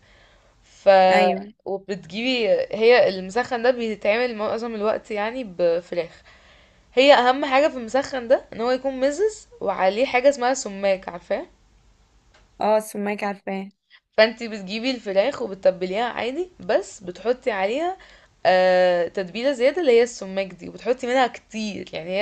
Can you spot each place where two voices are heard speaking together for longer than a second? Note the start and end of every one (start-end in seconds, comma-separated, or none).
none